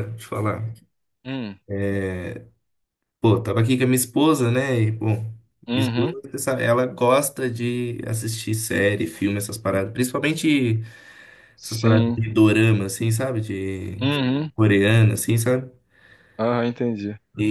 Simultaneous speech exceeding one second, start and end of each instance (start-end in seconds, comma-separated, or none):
none